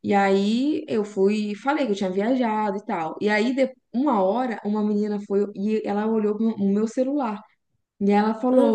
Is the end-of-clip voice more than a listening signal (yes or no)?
no